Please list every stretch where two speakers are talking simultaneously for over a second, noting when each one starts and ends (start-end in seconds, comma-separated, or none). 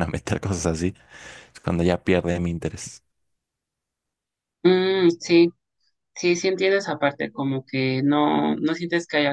none